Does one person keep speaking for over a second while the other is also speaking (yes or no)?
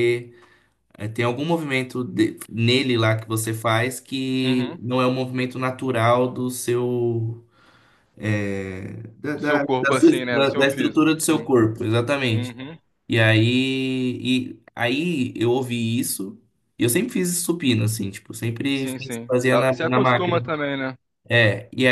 yes